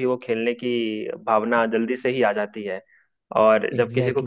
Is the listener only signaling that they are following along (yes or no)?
yes